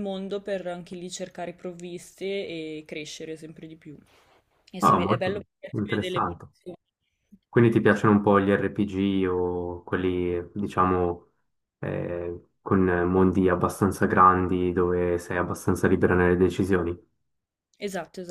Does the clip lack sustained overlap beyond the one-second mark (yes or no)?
no